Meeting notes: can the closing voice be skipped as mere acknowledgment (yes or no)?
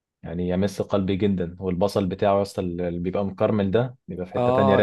no